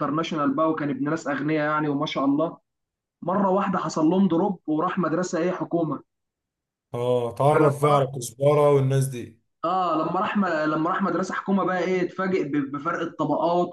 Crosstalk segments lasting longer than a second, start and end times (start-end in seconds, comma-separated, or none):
none